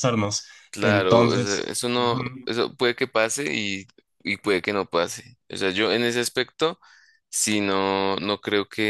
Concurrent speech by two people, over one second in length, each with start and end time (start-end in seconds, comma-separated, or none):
0.7-2.5